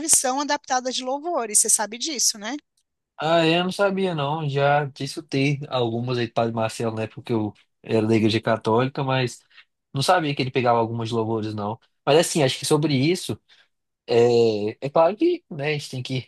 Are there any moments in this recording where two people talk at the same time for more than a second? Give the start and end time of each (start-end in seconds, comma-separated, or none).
none